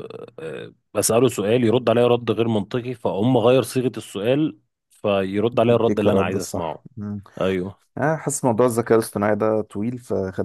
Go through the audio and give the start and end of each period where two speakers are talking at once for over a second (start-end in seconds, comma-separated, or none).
5.5-6.8